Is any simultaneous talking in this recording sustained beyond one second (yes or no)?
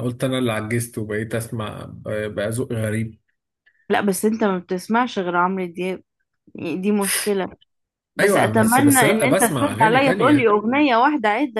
yes